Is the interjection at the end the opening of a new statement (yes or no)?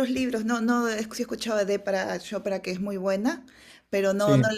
no